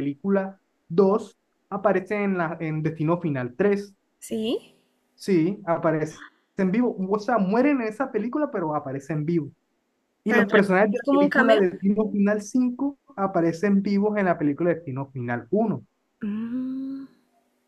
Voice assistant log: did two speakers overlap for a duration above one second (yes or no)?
yes